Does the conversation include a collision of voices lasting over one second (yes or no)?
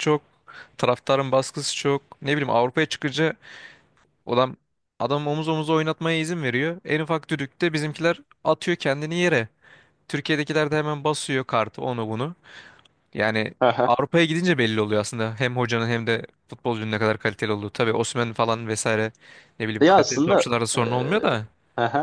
yes